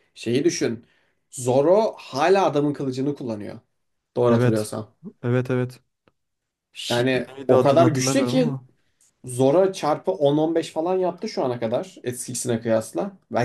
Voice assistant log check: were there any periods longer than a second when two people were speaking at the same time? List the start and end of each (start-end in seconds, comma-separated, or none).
6.9-8.6